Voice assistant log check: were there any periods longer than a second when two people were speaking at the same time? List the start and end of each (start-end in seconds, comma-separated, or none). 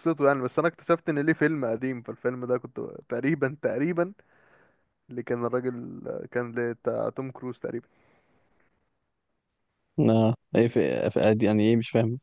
none